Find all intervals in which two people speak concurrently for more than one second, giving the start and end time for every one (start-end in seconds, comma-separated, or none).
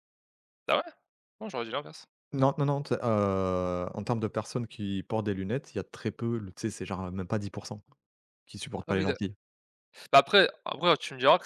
none